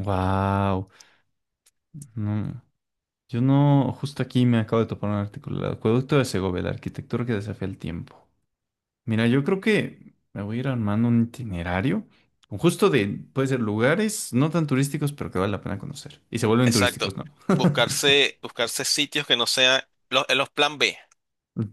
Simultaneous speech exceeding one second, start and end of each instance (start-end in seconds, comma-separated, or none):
none